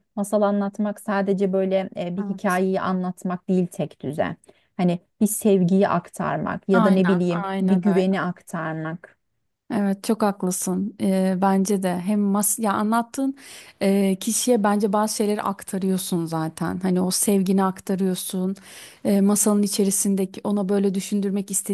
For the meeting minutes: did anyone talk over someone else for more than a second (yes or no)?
yes